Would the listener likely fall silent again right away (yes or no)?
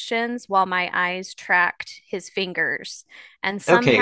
no